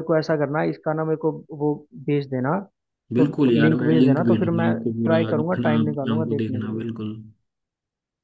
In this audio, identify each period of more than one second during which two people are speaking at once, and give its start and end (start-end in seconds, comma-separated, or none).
3.2-6.8